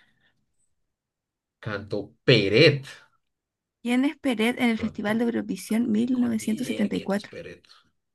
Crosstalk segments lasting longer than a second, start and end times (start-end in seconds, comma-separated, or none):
5.9-7.3